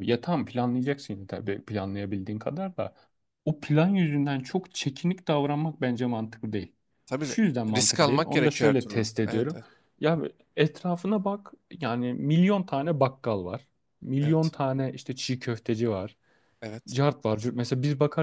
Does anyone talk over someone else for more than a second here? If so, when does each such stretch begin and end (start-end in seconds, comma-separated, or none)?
7.2-9.6